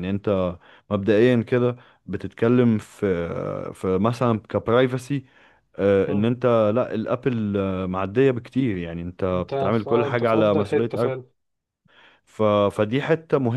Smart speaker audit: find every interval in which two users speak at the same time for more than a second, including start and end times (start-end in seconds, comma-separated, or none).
9.3-11.2